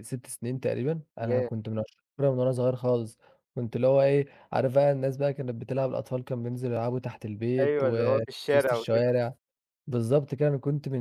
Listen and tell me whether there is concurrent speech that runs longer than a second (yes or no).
yes